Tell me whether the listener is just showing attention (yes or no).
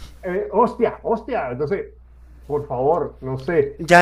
no